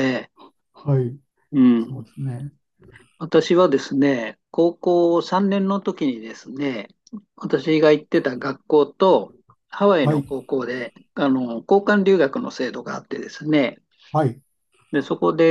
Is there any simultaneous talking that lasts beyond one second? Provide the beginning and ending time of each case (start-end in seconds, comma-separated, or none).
none